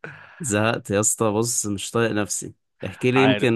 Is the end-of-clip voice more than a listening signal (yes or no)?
no